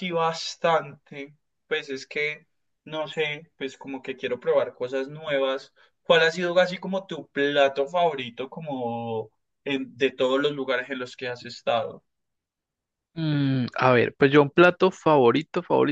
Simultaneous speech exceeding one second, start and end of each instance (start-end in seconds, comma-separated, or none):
none